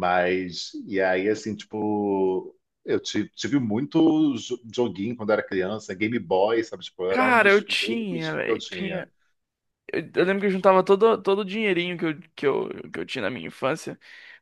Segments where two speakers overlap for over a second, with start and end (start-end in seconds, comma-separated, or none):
7.1-9.1